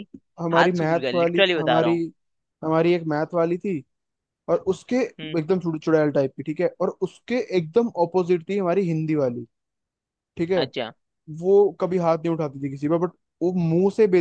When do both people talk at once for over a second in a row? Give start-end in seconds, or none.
0.5-1.9